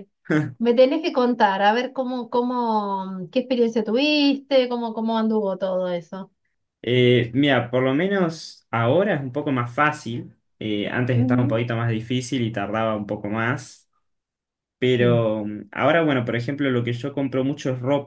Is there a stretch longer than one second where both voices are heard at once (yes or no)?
no